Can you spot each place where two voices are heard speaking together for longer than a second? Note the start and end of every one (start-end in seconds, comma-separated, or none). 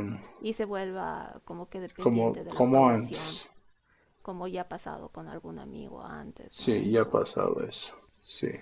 2.0-3.4, 6.5-8.1